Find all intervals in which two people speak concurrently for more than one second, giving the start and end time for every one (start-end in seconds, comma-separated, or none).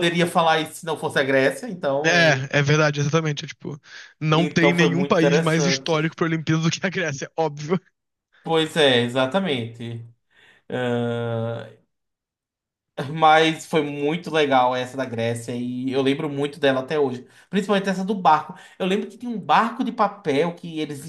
4.3-6.2